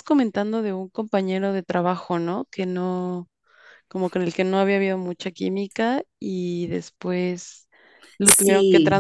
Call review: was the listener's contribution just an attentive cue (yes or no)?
yes